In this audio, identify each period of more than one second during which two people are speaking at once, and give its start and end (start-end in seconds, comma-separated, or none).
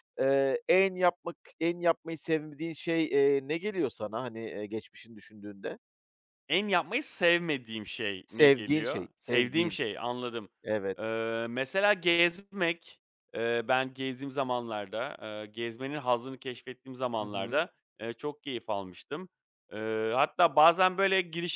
8.2-9.8